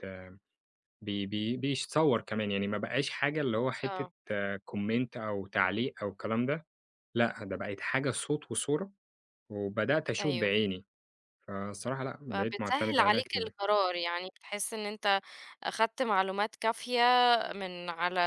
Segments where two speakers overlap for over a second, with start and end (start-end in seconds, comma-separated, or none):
12.3-13.5